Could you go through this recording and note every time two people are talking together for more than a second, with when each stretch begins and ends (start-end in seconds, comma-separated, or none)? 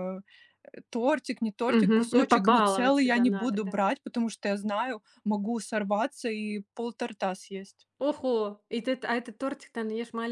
1.7-3.8